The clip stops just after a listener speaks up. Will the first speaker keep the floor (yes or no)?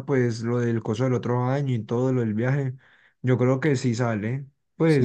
no